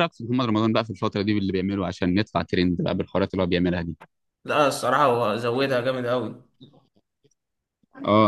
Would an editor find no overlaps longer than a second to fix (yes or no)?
yes